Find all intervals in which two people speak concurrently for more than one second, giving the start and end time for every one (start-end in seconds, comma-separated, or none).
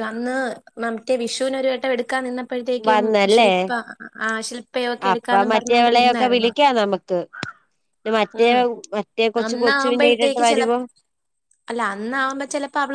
5.1-6.5, 9.5-10.7